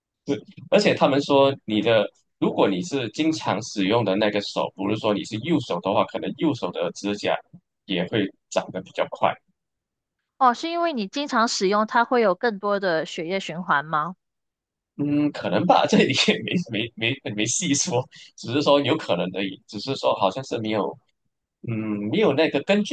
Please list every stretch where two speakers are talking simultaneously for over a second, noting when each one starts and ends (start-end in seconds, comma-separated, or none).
none